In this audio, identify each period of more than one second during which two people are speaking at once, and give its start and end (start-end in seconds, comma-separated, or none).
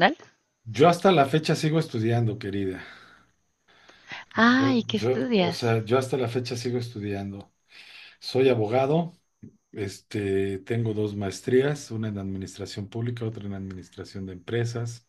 4.4-5.7